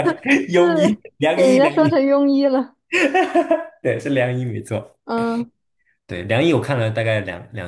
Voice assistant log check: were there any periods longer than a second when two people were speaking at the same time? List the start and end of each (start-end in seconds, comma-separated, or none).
0.6-2.0